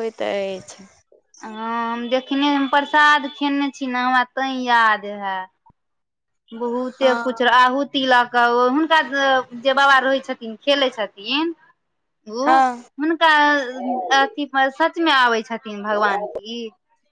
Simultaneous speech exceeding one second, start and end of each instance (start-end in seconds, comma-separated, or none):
none